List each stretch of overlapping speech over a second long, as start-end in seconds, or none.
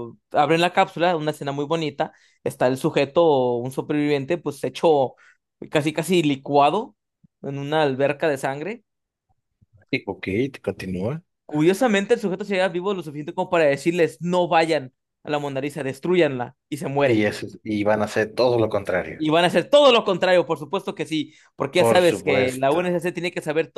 21.8-23.0